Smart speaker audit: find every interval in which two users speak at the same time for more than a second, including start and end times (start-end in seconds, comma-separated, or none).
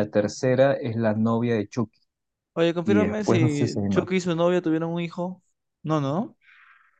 2.8-4.1